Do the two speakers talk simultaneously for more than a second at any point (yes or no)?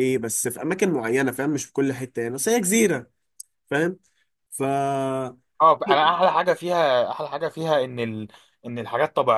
no